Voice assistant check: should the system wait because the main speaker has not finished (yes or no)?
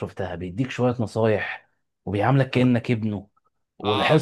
no